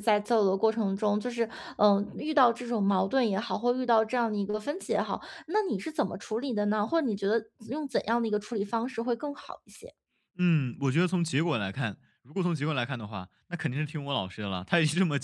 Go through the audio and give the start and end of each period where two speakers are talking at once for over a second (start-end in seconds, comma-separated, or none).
none